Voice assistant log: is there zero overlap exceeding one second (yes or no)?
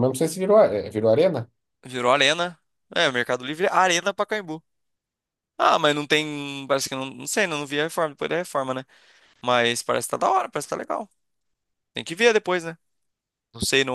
yes